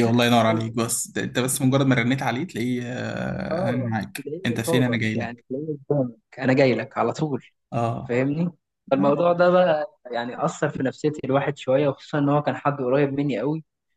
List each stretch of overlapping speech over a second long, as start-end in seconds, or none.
3.5-5.3